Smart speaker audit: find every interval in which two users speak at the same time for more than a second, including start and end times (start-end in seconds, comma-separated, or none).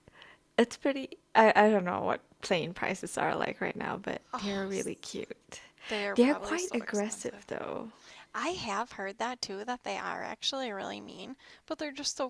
6.2-7.4